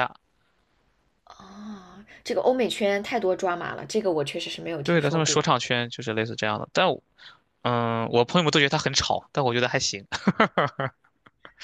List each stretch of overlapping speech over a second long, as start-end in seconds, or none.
none